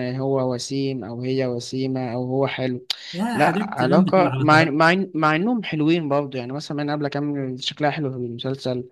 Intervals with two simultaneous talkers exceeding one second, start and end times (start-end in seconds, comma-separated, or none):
3.3-4.8